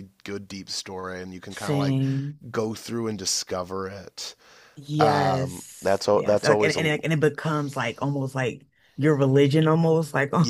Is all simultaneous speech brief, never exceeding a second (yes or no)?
no